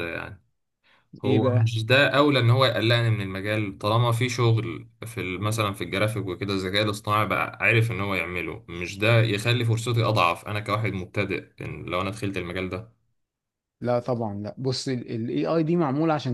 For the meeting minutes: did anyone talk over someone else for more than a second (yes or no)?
no